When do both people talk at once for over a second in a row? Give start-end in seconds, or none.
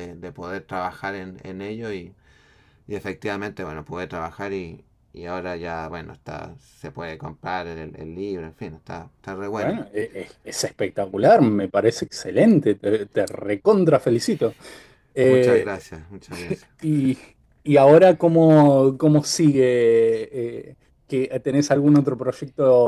none